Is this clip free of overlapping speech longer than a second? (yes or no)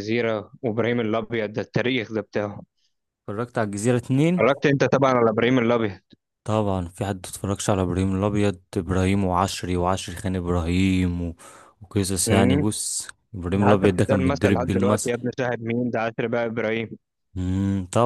no